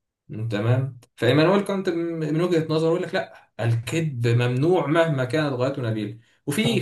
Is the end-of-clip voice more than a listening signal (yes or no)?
no